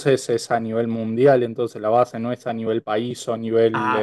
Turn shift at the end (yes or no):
no